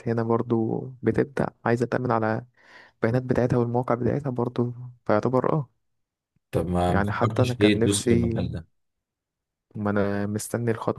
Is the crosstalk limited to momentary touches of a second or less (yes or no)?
no